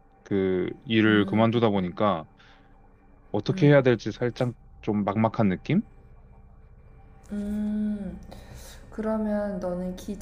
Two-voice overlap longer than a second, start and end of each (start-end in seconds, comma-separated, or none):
none